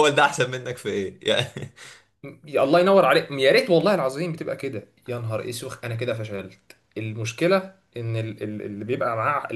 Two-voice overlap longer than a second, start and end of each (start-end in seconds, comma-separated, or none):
none